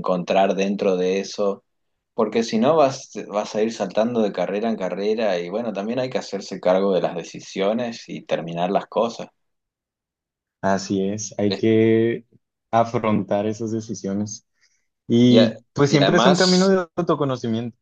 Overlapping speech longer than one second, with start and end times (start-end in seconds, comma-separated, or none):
15.3-16.7